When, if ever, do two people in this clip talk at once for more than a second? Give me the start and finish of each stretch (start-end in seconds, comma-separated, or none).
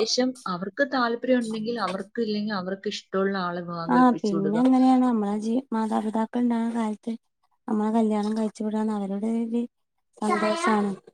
none